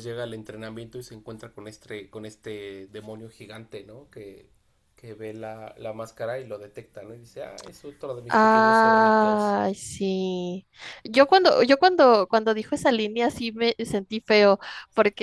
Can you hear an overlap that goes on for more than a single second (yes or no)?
yes